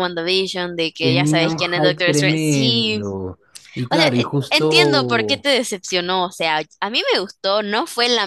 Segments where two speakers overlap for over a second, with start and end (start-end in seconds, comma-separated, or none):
1.0-3.0, 3.9-5.5